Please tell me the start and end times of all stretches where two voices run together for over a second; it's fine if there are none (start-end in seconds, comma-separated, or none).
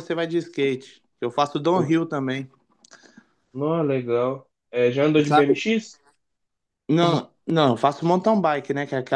none